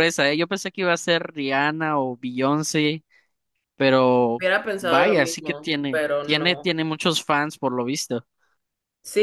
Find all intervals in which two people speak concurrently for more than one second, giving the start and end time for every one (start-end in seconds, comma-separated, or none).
4.4-6.7